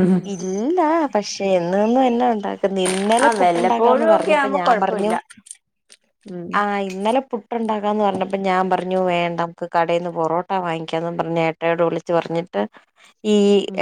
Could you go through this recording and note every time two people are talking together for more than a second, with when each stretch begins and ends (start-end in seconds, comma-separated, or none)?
3.2-5.1